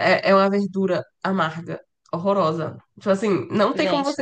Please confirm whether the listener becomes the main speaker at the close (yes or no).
no